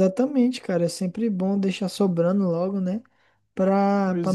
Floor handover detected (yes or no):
no